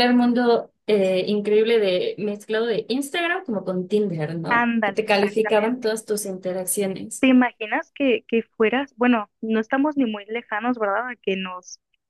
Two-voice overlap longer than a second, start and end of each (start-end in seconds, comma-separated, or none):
4.5-6.0